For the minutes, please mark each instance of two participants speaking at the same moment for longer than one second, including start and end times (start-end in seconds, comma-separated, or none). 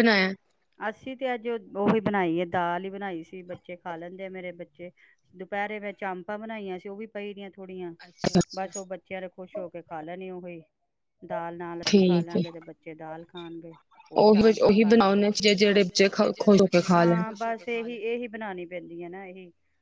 15.2-16.8